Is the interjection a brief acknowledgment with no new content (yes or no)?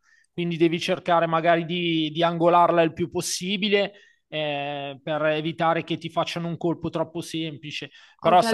no